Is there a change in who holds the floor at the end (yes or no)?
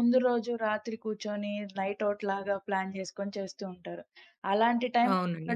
no